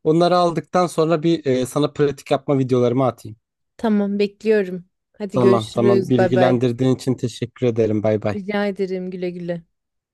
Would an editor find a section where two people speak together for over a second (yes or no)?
yes